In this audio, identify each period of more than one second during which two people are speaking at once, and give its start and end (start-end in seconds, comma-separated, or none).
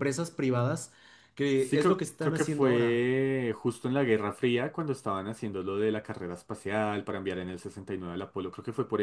1.5-3.0